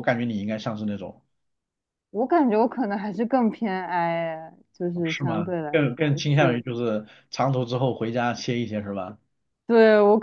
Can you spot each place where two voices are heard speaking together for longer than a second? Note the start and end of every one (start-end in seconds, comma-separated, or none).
5.0-6.6